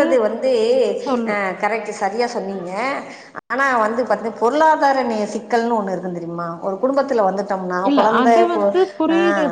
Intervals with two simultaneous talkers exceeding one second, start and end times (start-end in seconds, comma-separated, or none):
none